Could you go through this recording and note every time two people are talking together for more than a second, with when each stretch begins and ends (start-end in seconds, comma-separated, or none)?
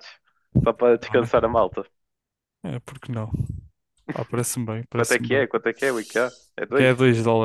none